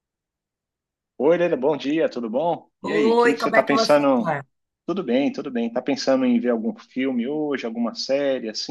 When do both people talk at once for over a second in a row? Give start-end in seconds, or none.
2.8-4.3